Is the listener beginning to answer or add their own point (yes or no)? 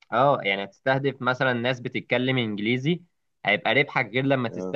no